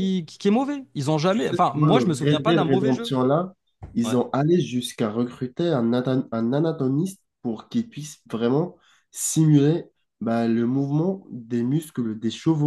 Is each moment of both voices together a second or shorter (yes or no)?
no